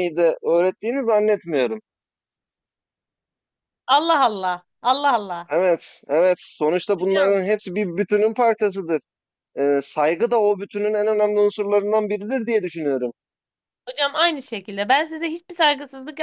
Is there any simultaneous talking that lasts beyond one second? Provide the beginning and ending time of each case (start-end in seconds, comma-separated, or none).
none